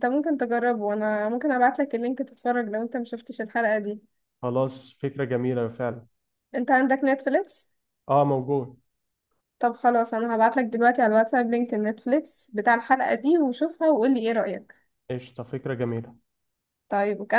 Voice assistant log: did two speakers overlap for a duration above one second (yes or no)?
no